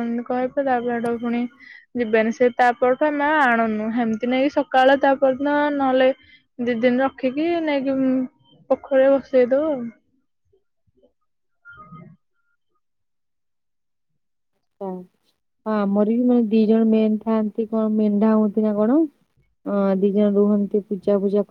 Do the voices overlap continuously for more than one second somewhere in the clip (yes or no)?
no